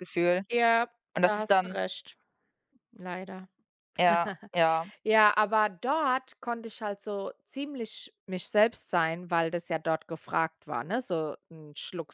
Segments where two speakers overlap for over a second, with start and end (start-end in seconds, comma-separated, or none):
none